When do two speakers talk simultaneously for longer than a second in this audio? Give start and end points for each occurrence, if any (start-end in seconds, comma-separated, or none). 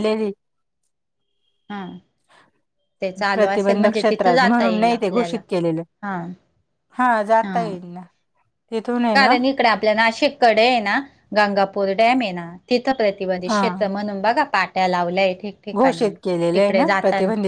3.3-5.4